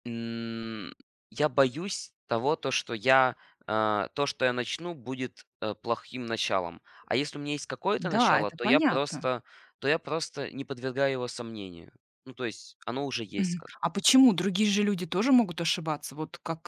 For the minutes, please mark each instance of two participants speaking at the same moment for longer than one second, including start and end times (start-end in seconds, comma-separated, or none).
8.0-9.3